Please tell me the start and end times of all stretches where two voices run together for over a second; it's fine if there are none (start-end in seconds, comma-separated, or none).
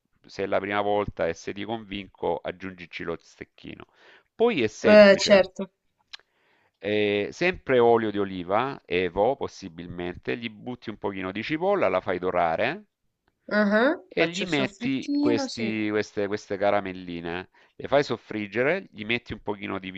14.1-15.8